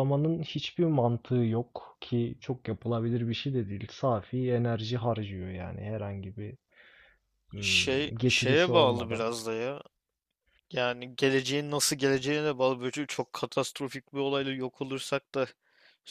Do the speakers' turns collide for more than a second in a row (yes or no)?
yes